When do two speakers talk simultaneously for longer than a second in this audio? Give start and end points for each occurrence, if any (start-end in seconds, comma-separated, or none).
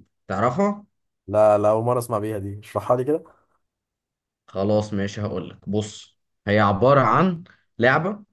none